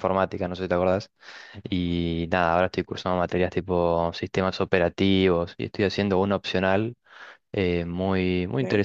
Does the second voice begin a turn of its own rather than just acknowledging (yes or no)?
no